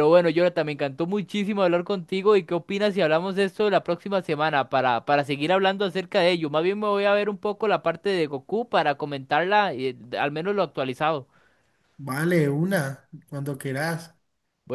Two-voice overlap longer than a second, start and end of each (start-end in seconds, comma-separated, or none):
none